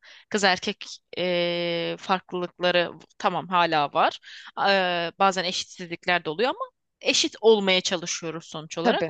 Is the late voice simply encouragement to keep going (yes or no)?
yes